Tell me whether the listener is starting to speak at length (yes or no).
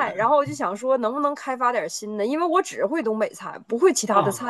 yes